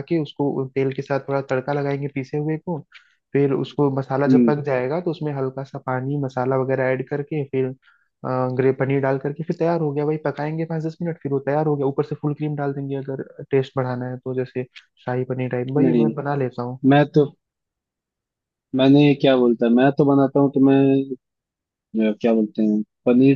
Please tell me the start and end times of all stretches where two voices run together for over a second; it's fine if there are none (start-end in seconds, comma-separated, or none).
none